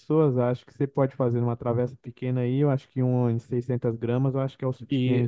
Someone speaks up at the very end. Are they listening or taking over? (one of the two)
taking over